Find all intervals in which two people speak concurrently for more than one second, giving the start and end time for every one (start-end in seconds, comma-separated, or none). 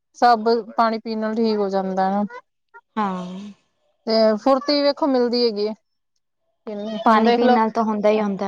none